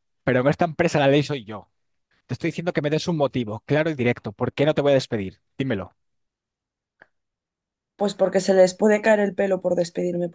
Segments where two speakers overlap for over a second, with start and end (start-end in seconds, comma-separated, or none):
none